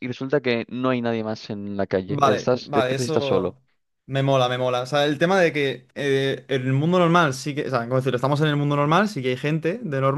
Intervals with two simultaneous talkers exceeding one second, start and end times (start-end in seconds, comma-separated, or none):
2.1-3.6